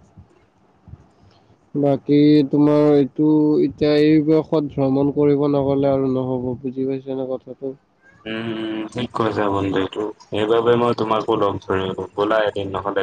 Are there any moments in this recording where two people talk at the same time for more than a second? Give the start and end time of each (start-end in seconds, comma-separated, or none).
none